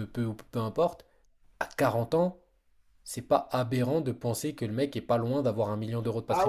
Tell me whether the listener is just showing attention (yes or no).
no